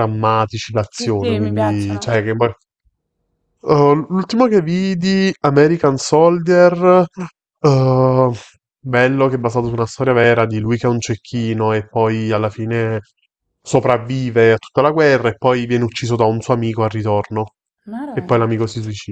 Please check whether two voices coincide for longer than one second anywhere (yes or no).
yes